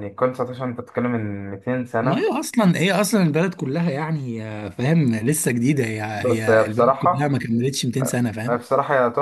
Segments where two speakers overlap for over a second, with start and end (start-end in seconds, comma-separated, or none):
6.1-7.4